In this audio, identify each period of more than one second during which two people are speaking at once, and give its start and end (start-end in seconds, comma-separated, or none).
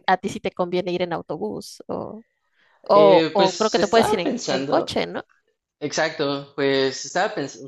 2.9-5.0